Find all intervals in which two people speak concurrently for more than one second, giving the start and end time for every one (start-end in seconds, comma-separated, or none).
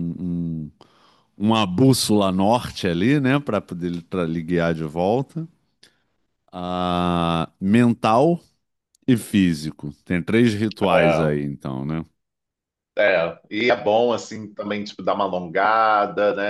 none